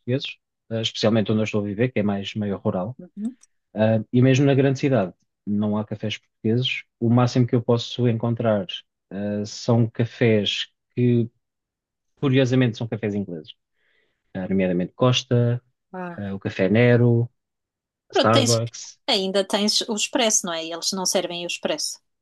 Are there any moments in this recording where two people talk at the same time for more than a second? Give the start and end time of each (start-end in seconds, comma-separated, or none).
none